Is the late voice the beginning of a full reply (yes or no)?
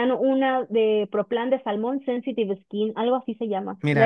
yes